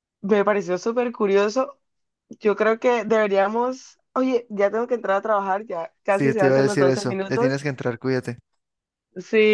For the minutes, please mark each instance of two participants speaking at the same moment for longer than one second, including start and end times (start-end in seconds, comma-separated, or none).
6.1-7.6